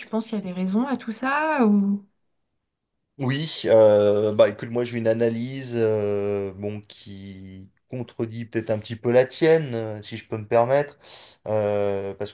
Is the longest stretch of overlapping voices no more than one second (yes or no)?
yes